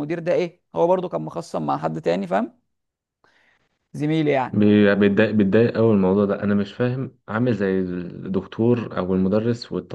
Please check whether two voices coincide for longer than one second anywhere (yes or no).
no